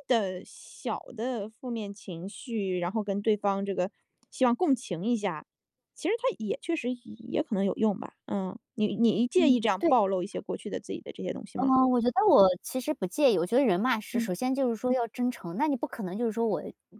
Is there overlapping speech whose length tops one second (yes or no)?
no